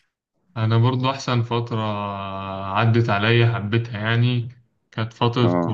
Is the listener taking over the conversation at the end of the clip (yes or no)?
no